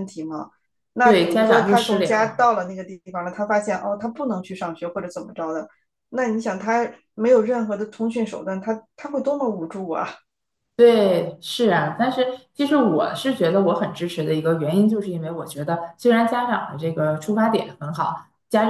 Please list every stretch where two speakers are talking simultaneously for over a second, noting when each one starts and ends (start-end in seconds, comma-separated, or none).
1.0-2.4